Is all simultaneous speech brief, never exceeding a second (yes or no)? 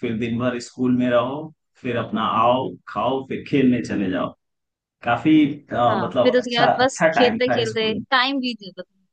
no